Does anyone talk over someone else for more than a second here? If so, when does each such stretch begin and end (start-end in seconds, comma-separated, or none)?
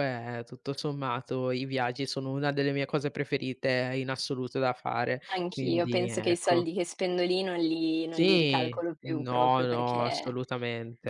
5.3-6.7, 8.1-10.4